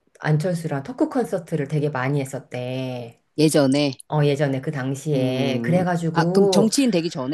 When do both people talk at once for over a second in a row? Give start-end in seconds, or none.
5.1-6.7